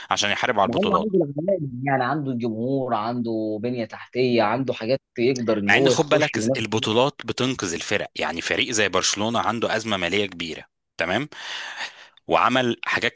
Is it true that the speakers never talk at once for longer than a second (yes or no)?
no